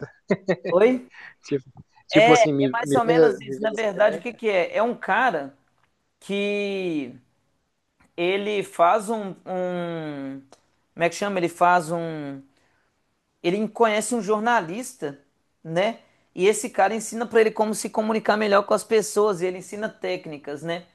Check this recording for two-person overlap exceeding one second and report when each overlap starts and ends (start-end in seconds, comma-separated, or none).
2.1-4.3